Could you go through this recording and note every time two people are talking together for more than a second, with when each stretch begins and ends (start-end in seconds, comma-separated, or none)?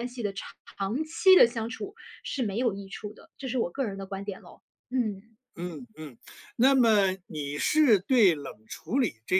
none